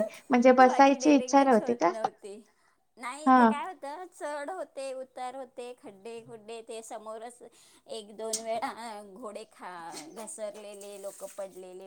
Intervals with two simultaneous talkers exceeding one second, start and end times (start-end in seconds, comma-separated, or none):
0.7-1.9